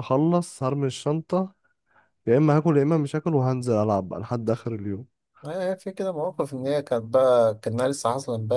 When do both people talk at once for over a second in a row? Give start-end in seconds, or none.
none